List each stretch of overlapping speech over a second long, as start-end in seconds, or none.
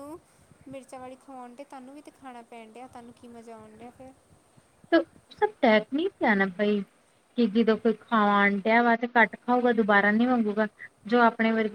none